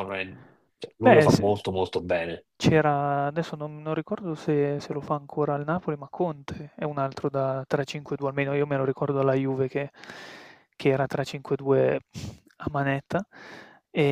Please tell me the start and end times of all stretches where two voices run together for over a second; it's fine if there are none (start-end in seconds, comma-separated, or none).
none